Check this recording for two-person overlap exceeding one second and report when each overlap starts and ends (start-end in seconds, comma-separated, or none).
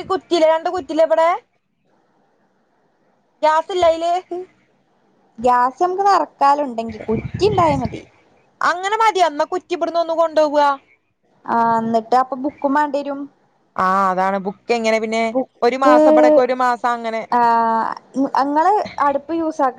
none